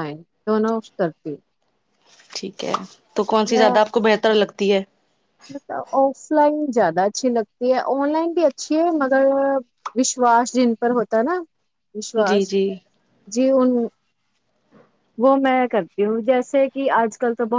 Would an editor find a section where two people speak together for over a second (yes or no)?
no